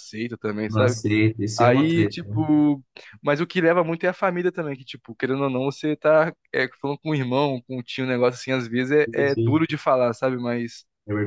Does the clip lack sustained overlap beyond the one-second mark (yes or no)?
yes